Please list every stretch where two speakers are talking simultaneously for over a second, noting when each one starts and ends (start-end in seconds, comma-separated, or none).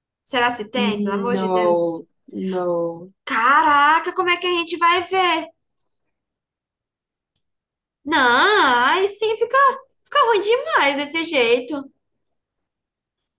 0.7-2.0